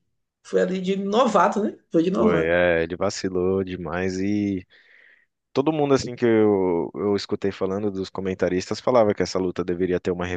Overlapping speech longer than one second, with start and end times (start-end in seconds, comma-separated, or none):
none